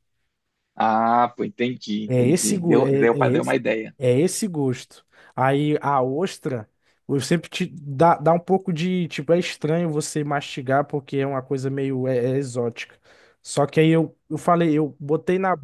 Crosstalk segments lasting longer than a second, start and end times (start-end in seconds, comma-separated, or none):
2.1-3.6